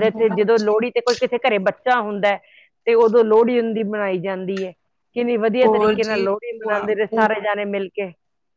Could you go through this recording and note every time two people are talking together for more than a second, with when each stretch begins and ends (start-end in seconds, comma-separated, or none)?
5.6-7.3